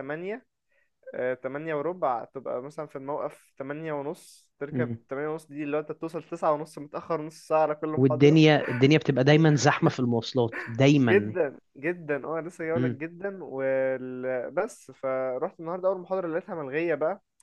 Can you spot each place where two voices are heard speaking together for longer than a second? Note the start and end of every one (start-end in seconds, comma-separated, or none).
none